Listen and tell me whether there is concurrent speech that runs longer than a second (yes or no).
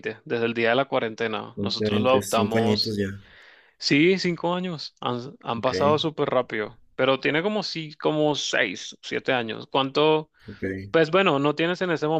yes